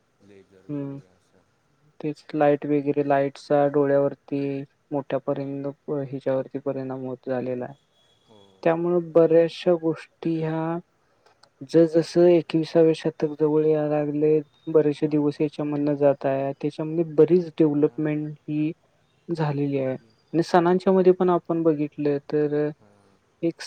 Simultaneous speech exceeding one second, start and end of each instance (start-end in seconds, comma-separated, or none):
none